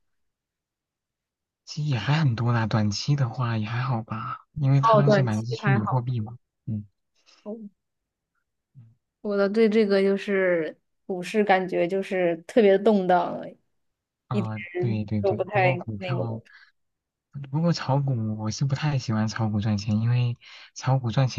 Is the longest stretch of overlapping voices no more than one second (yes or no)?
no